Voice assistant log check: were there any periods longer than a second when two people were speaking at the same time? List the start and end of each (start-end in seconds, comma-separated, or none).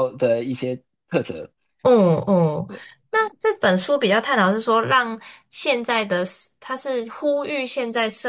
none